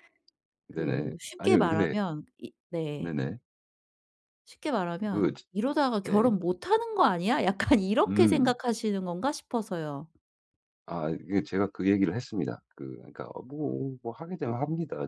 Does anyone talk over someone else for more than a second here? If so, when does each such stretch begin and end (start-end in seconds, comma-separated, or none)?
0.7-1.9